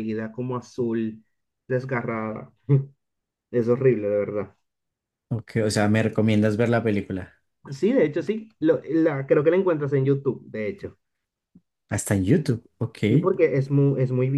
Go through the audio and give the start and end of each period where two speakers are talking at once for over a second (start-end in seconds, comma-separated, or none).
none